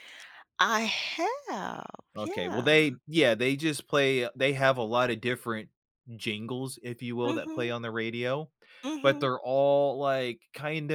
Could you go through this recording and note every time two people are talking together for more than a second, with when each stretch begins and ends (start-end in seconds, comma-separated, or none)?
none